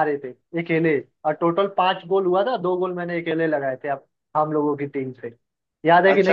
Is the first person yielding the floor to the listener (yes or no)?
yes